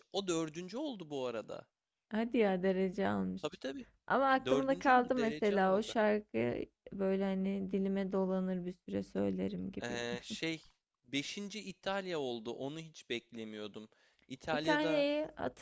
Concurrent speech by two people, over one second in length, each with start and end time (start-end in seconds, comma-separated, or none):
4.4-6.0